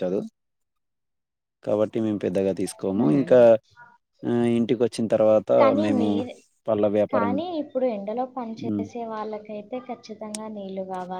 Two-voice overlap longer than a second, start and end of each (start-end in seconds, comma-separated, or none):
none